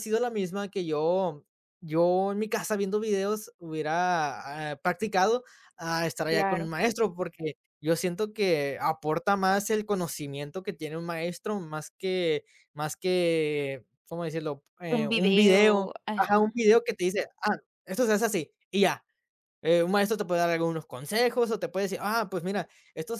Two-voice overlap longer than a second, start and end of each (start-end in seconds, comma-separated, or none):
14.9-16.6